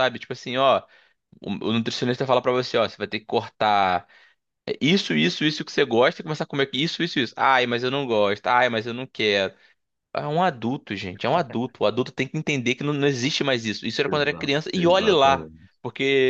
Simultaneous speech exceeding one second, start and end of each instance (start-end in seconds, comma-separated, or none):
14.1-15.8